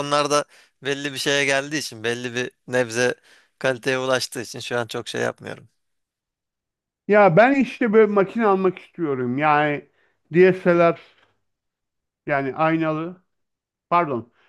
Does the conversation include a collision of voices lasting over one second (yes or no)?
no